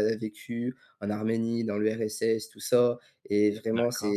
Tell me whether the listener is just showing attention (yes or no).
yes